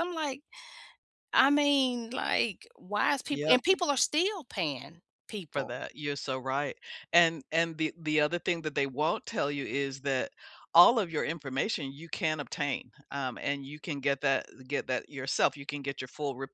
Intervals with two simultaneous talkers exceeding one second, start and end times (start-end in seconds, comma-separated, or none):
none